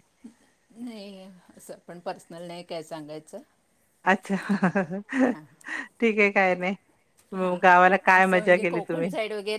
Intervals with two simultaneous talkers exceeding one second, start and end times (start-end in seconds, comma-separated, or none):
7.4-9.1